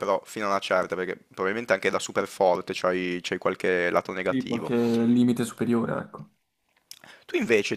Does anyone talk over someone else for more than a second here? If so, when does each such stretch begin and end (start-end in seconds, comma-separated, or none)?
none